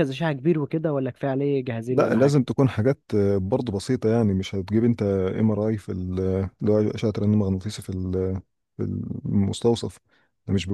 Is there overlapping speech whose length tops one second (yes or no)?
no